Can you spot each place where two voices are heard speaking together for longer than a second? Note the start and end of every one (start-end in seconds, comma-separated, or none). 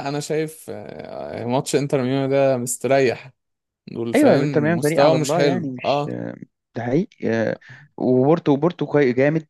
4.1-6.0